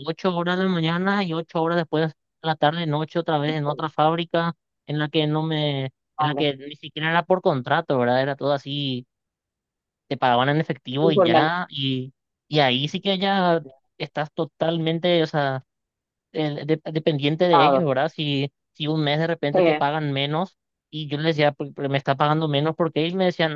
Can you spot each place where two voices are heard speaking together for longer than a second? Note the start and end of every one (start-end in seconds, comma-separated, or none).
none